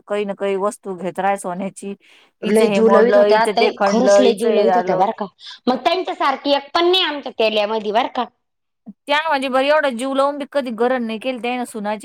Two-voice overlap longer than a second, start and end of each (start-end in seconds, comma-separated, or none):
2.5-5.0